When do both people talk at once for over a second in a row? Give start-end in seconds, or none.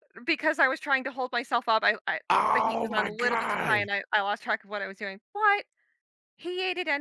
2.3-3.8